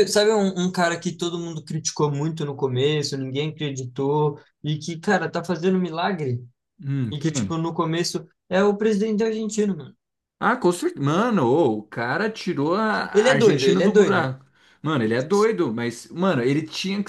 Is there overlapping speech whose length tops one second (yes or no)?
yes